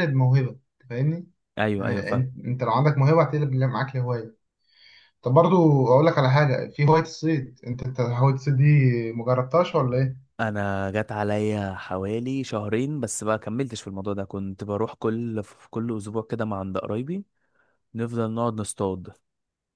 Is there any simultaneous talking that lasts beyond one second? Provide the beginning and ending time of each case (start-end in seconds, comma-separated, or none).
none